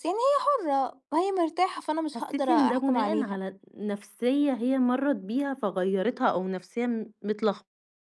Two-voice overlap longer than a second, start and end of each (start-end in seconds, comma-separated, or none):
2.1-3.4